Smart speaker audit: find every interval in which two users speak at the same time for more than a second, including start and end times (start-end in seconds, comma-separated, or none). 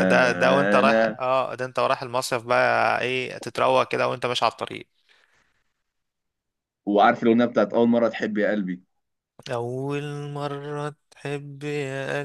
none